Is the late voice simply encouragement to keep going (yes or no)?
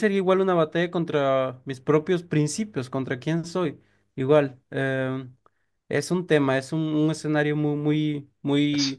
yes